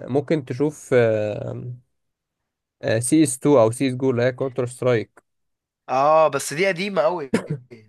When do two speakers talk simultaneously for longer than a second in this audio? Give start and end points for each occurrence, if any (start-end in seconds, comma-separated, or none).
none